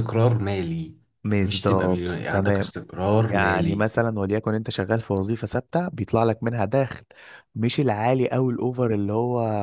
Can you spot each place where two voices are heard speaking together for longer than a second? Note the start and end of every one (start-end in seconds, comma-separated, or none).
1.4-2.7